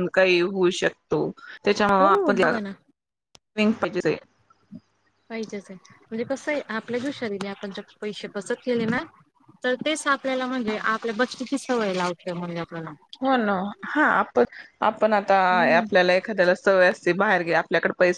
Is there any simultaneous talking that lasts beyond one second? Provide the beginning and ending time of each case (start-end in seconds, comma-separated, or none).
none